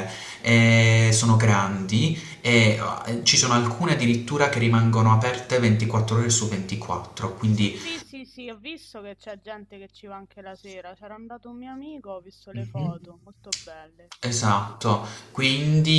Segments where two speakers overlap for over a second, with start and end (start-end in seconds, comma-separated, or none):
none